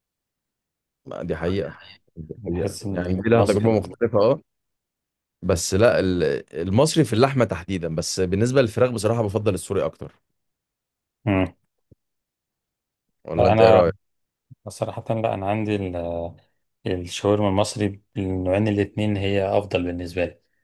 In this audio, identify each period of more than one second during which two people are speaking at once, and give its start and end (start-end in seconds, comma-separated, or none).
2.4-3.9